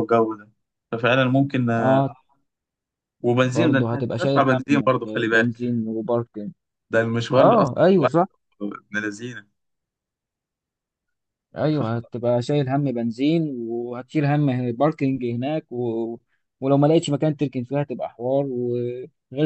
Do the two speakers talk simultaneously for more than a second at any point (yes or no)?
yes